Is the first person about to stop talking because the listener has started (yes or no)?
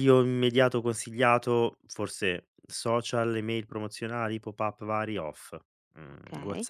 no